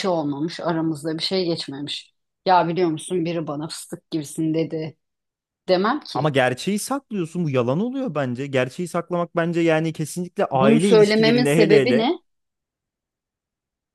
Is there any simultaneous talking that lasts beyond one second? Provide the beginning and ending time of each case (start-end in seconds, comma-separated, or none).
10.5-12.1